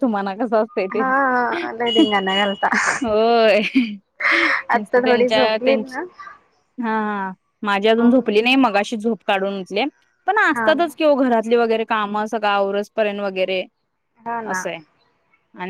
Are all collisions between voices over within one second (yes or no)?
no